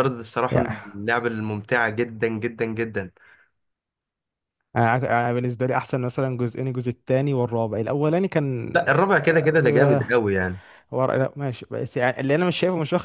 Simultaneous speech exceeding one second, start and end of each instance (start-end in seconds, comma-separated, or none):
8.7-10.0